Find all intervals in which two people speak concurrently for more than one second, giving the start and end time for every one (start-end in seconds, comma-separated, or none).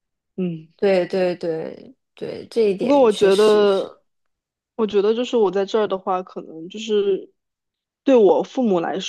2.8-4.0